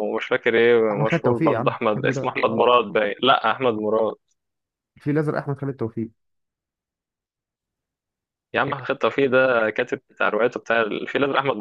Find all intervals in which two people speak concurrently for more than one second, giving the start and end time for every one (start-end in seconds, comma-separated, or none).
0.9-2.6